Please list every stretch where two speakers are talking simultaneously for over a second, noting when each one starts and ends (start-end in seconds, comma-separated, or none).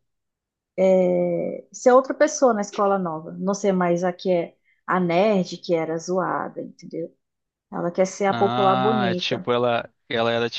8.3-9.5